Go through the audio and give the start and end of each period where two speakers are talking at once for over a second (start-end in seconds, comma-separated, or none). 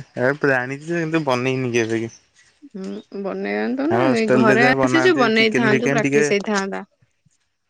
3.9-6.2